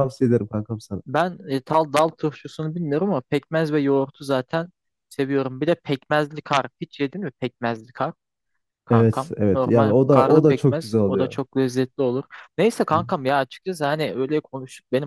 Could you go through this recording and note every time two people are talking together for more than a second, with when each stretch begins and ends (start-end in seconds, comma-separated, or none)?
8.9-11.4